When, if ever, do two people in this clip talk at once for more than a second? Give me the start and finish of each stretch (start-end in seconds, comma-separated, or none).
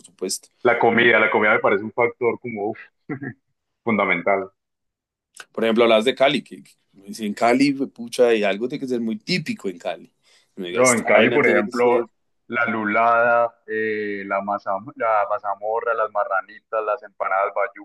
10.7-12.0